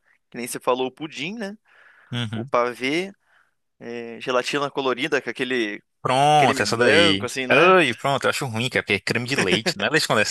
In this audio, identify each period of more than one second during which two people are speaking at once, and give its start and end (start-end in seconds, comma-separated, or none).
6.4-7.8